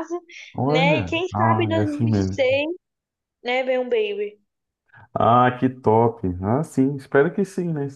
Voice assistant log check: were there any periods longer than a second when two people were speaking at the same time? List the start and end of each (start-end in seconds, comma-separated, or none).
0.7-2.4